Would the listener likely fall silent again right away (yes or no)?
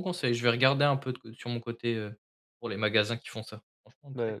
no